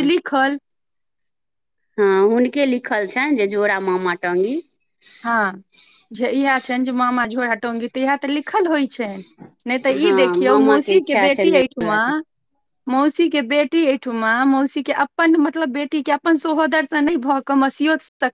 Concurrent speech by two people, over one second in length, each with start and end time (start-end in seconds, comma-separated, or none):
10.0-12.1